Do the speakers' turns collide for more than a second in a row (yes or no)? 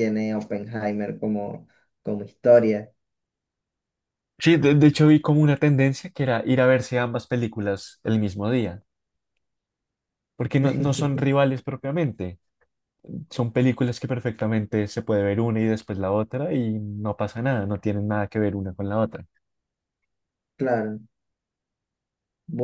no